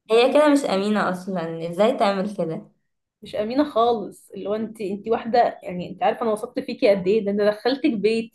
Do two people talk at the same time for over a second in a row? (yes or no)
no